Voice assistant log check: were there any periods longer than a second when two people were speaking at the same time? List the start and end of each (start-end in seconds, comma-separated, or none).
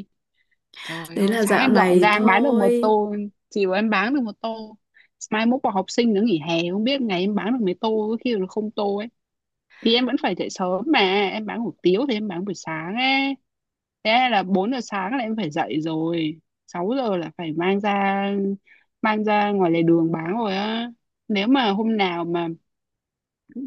1.1-3.0